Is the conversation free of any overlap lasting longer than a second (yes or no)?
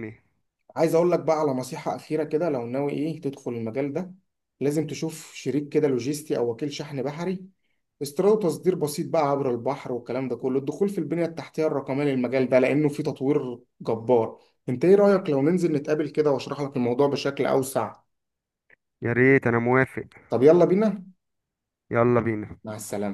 yes